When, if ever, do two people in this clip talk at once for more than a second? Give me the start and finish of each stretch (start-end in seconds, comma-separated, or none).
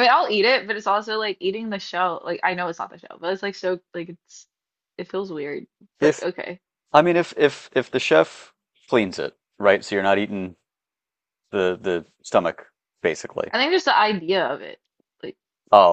none